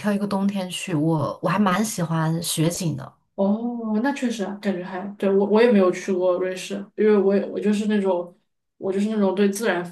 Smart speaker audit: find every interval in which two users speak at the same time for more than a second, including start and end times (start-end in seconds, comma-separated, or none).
none